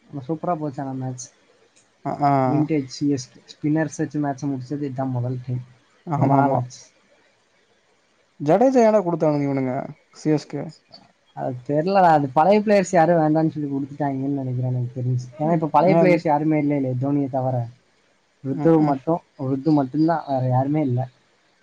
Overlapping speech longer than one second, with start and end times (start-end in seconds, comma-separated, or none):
none